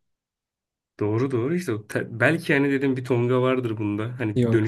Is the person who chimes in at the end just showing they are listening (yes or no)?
yes